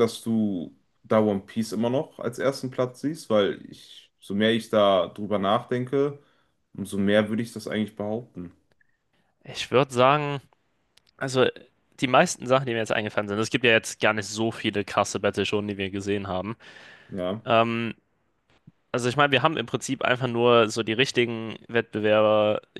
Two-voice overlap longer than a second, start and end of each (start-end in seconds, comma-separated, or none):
none